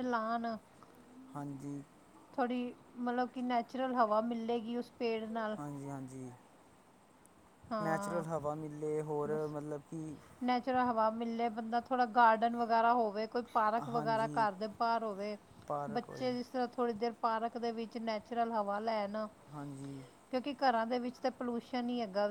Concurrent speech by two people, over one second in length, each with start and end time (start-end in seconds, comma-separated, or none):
none